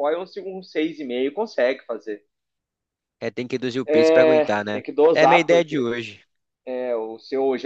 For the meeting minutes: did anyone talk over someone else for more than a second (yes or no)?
yes